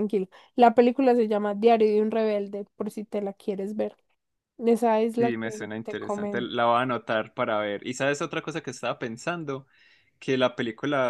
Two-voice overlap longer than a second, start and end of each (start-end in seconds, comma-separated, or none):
5.2-6.5